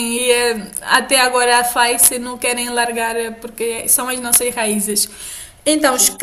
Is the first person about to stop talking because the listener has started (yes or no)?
no